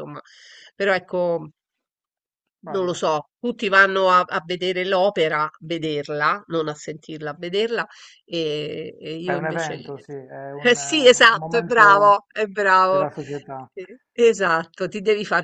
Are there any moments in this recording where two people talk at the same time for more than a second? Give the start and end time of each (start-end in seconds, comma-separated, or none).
10.7-12.2